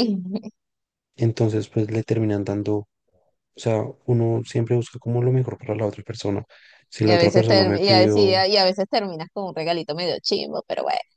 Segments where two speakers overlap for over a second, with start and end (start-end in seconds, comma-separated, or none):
7.0-8.4